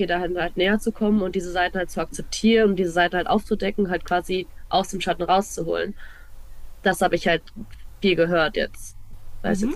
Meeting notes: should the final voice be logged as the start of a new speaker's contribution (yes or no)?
yes